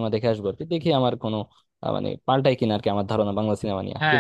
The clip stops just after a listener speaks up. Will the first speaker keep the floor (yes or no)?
no